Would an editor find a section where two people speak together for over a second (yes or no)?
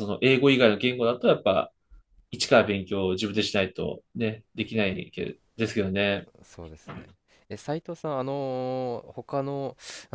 no